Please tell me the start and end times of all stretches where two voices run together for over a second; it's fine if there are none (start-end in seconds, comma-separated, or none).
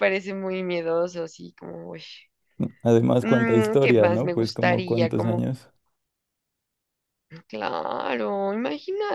3.2-5.5